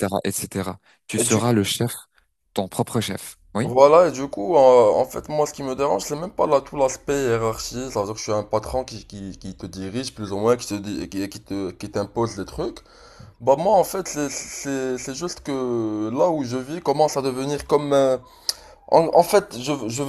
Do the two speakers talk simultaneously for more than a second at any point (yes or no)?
no